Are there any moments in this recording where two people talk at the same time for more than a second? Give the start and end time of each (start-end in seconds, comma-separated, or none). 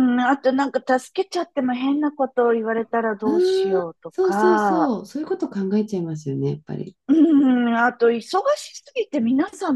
3.2-4.9